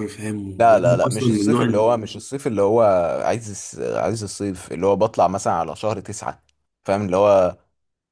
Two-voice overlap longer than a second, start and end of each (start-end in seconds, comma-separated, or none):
0.6-1.8